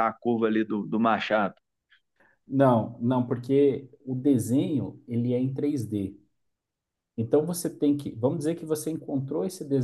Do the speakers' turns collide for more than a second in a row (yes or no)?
no